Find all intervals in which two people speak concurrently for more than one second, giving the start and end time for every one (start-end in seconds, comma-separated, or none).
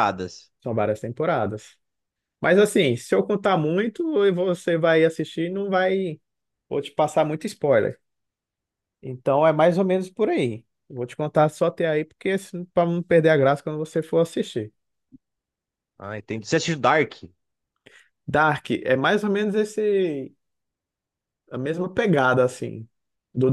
none